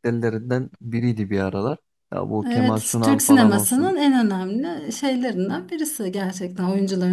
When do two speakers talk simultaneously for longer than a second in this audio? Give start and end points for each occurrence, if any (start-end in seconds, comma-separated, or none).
2.5-4.0